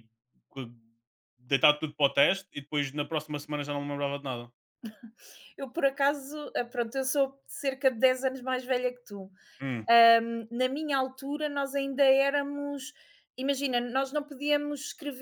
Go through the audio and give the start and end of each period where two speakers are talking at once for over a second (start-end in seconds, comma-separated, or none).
none